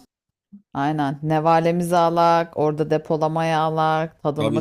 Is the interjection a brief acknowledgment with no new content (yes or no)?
no